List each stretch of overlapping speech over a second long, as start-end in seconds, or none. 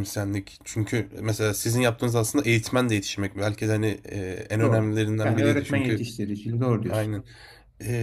4.6-6.0